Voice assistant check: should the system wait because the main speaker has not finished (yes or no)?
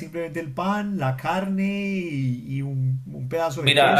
no